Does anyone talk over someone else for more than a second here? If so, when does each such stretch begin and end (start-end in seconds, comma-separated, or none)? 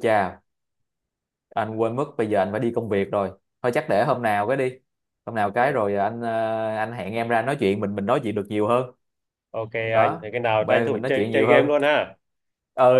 9.9-11.7